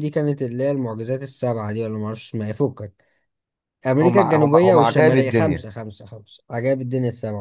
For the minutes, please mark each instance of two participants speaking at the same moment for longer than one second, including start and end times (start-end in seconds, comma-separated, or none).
4.0-5.7